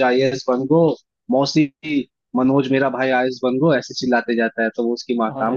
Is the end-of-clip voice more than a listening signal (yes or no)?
no